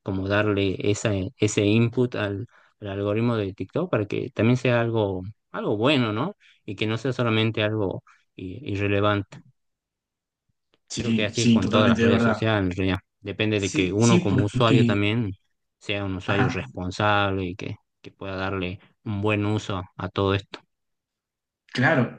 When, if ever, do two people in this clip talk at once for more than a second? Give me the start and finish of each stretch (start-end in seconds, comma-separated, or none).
11.0-12.4, 13.5-15.1